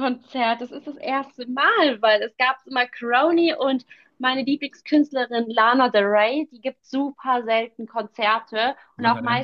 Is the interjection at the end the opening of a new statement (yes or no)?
no